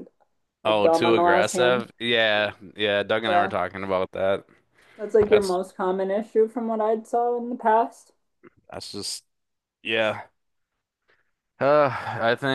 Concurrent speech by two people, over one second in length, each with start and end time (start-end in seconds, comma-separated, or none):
0.7-1.9